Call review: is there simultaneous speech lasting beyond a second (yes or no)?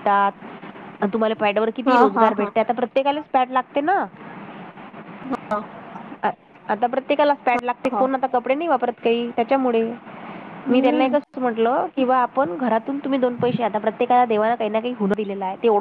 no